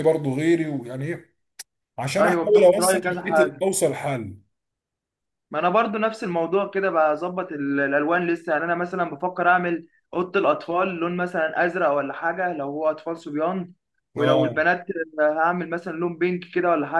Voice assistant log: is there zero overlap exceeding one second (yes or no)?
no